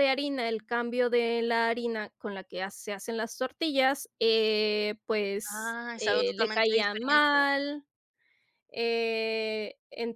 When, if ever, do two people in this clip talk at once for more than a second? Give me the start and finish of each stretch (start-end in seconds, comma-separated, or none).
5.5-7.4